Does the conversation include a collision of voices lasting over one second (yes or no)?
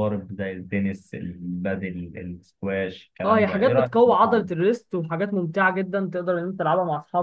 yes